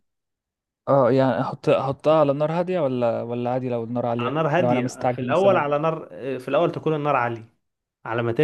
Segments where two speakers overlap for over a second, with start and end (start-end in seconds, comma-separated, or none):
4.2-5.7